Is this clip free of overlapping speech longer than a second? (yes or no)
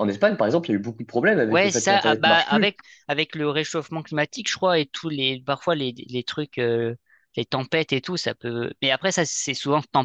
no